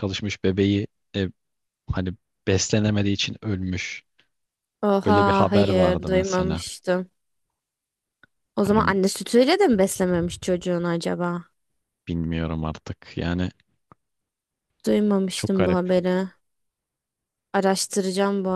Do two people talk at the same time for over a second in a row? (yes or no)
yes